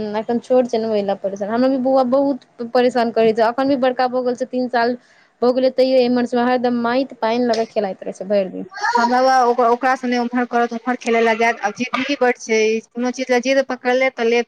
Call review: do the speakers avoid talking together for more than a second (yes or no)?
yes